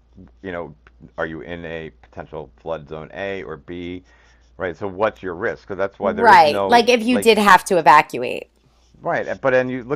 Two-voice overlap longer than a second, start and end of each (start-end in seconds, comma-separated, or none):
6.0-7.3